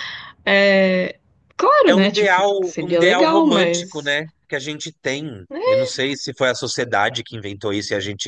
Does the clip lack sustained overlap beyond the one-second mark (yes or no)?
no